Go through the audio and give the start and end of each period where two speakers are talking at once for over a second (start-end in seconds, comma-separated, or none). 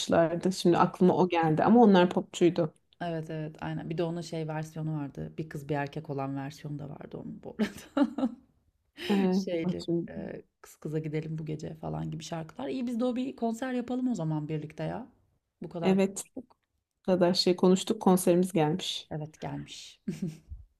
none